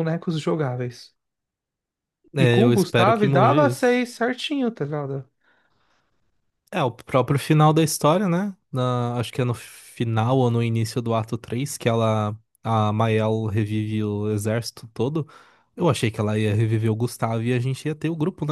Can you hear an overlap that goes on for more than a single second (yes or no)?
yes